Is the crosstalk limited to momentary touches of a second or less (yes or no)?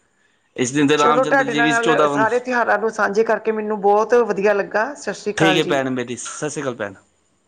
no